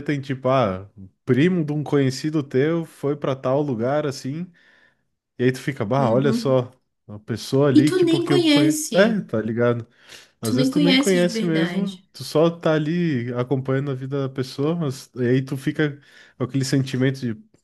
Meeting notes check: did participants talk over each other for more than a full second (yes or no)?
yes